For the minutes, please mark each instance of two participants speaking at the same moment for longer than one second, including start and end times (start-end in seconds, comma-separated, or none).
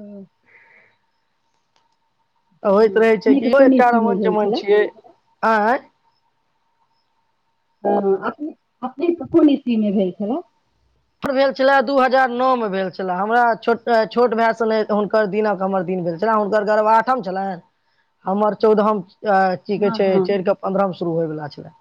2.7-4.6